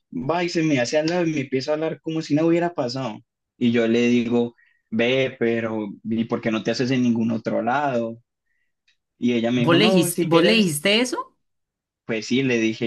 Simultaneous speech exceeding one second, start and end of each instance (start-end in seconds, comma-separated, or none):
9.6-10.8